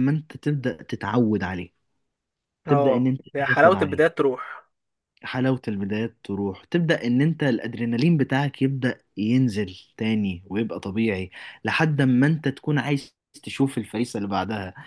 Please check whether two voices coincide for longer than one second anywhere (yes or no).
yes